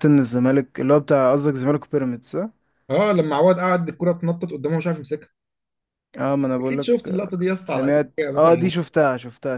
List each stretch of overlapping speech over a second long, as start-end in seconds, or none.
6.7-8.7